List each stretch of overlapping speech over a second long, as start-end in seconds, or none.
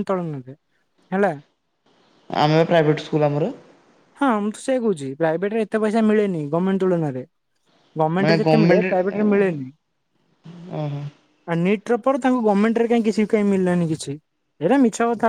8.2-9.6